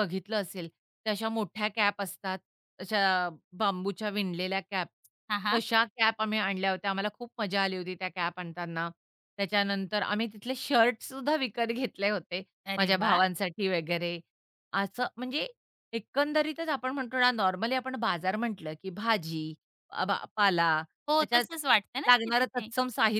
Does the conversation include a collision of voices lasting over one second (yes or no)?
no